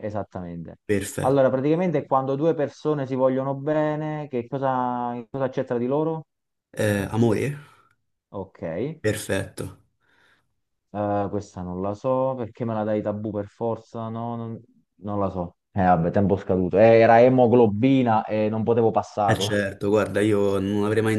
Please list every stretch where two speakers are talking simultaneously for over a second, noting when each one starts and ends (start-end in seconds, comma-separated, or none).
none